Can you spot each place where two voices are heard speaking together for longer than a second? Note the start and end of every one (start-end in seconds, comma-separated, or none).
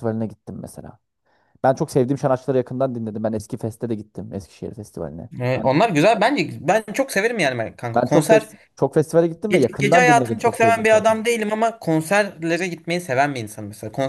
9.5-11.2